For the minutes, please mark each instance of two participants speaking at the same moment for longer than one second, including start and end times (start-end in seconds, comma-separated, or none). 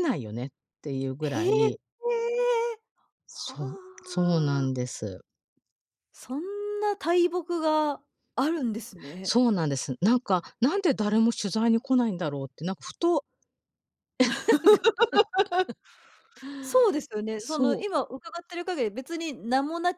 3.3-4.7